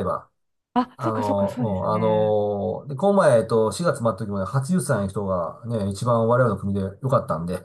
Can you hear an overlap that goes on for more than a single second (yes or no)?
yes